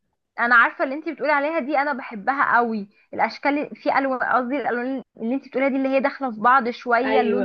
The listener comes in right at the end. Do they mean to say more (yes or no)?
no